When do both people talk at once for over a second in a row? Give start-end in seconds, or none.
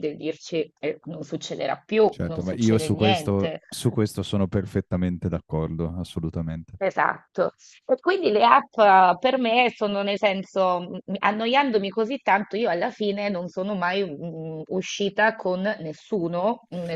2.1-3.6